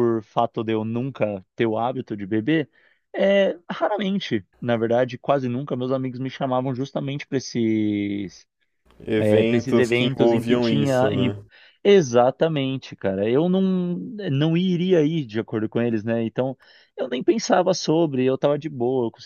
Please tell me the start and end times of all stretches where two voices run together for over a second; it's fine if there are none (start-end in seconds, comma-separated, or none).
9.2-11.3